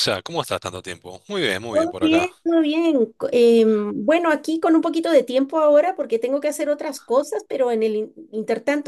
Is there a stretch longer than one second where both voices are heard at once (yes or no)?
no